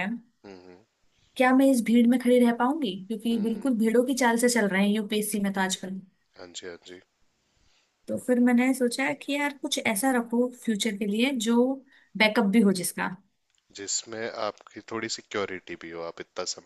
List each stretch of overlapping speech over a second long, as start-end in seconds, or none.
none